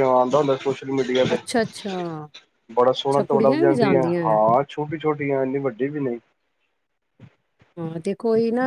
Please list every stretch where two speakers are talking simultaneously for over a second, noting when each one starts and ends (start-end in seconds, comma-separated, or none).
3.0-4.4